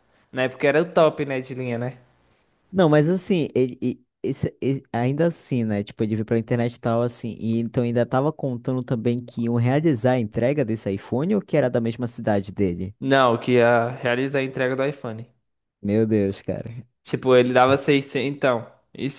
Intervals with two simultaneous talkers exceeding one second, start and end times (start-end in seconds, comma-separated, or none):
none